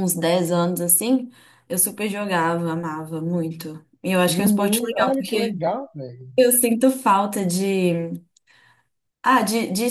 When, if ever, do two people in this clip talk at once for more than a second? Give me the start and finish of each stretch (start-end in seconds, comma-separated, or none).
4.3-5.6